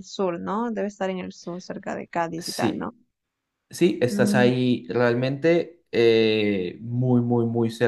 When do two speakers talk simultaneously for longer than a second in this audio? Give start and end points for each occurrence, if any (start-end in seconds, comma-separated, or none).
none